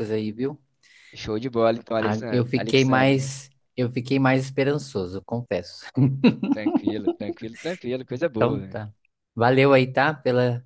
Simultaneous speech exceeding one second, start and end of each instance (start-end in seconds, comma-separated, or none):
2.0-3.3